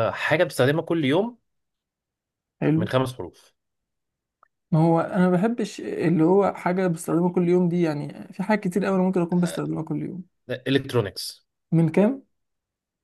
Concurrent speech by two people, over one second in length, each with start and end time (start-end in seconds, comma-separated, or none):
none